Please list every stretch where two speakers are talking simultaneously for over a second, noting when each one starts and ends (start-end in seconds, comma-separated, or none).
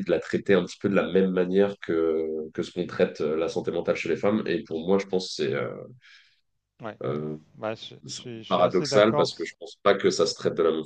8.1-9.6